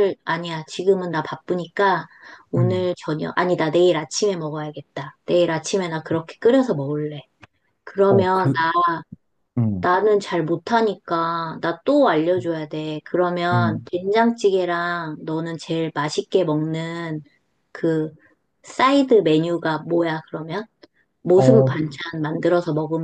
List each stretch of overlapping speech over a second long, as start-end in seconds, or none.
none